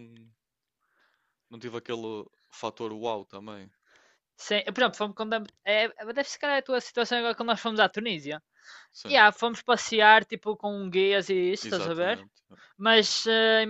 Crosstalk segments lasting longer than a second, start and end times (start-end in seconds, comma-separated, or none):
none